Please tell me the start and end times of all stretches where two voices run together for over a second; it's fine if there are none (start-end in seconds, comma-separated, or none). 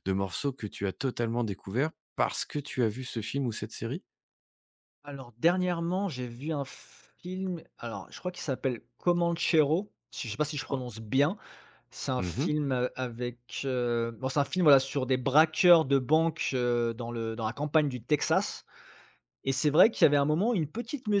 none